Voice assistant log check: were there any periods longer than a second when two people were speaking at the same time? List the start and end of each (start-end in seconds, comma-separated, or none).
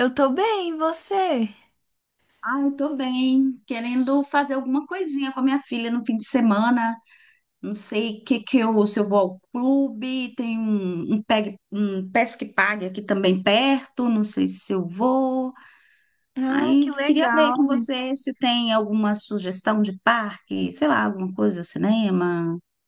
16.5-17.9